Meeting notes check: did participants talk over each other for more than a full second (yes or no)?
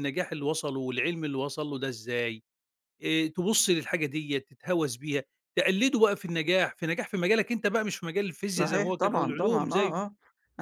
yes